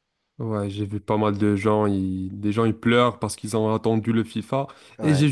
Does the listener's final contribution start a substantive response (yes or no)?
no